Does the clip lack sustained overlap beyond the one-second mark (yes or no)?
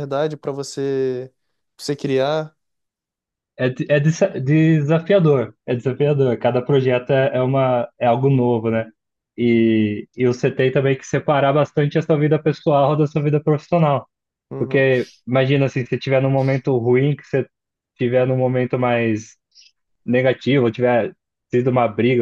yes